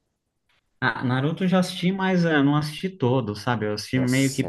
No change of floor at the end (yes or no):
no